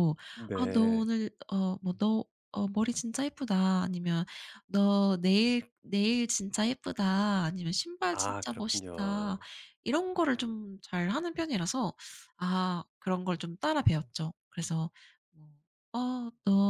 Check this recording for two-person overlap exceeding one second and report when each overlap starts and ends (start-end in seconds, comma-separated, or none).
8.1-9.4